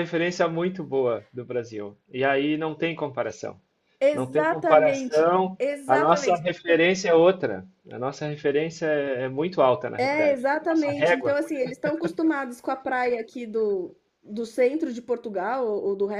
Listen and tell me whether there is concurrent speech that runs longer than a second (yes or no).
yes